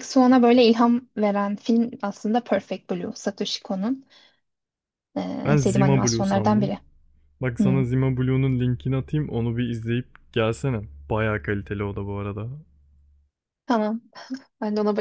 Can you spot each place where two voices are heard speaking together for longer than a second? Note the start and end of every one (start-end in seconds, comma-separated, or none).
5.5-6.7